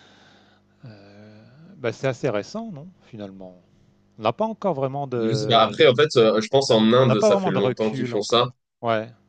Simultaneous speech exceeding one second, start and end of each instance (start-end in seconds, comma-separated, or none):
6.6-8.4